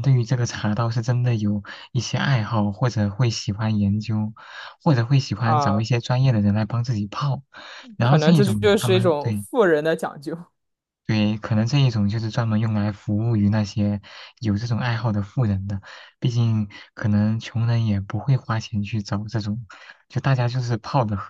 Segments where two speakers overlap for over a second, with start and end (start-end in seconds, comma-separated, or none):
8.0-9.5